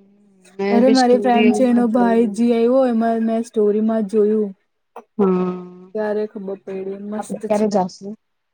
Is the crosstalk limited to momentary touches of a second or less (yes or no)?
no